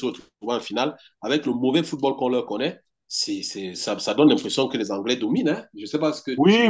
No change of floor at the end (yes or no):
no